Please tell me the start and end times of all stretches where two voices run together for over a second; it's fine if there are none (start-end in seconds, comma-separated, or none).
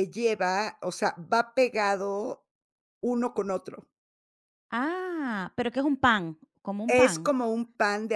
none